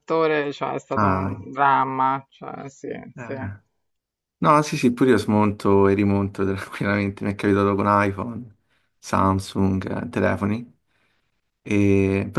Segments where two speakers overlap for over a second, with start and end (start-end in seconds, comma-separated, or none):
none